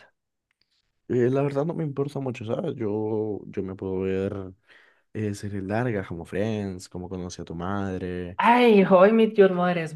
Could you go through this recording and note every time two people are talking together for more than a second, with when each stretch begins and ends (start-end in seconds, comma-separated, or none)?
none